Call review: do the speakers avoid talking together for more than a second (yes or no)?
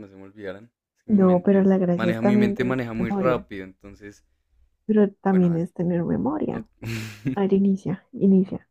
no